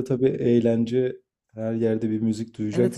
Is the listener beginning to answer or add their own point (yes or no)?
yes